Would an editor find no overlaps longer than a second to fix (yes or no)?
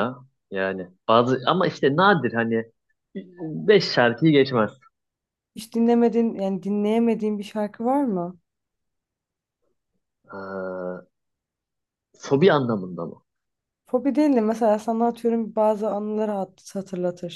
yes